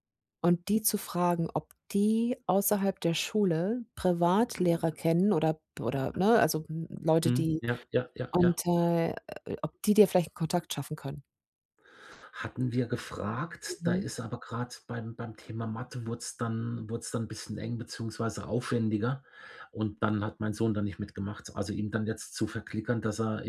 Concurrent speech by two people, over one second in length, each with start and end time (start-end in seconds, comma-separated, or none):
none